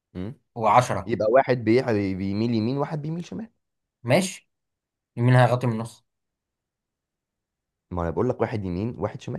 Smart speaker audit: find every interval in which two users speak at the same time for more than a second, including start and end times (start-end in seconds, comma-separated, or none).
none